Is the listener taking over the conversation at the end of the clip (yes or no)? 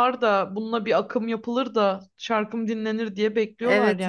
yes